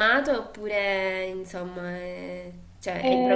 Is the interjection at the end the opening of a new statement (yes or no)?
yes